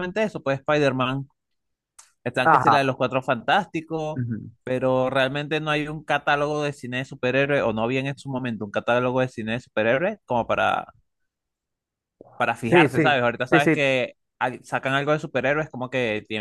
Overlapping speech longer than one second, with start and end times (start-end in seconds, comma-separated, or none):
12.6-13.9